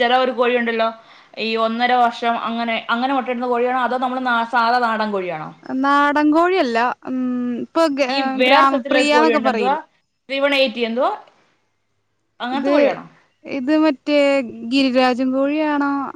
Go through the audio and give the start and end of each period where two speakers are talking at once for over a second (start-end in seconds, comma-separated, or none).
8.4-9.8